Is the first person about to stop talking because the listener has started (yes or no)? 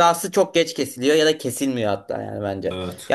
no